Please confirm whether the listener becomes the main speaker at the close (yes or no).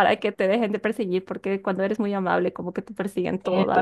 yes